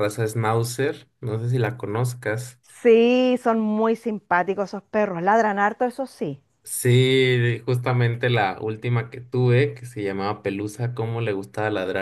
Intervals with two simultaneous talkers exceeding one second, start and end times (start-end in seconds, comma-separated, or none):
none